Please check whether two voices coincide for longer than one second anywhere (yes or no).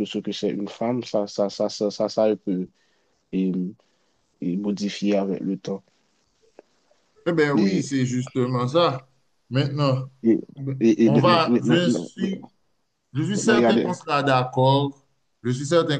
yes